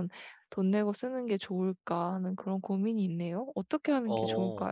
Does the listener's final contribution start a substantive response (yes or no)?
yes